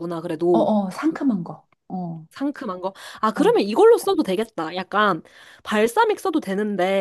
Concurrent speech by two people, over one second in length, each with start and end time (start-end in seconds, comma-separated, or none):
none